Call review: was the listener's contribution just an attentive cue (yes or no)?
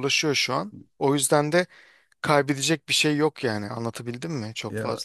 no